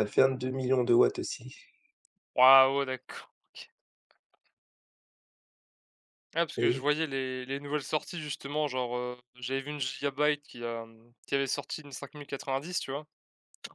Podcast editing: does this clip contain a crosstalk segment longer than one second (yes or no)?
no